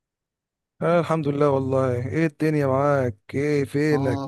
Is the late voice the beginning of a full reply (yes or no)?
yes